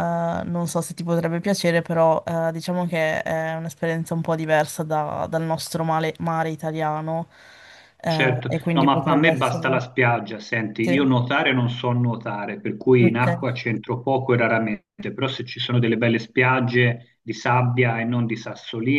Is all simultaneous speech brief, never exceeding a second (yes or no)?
no